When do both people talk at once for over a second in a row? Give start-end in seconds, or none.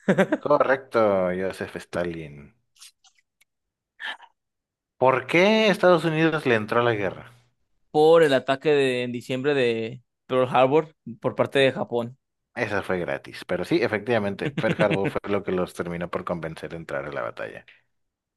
none